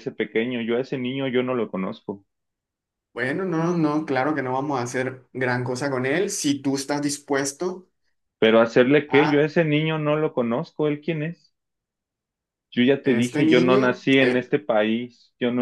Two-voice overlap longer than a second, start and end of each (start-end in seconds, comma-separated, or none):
13.0-14.5